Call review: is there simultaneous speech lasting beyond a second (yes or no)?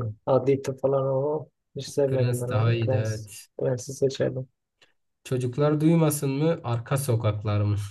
yes